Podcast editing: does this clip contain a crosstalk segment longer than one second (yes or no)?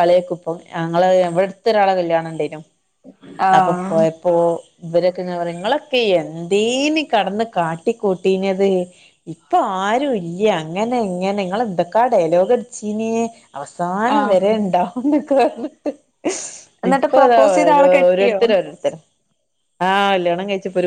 yes